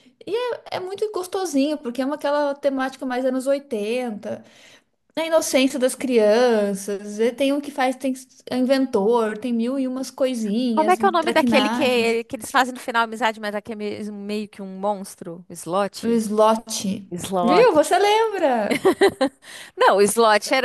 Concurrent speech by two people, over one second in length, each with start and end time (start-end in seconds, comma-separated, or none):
10.7-12.2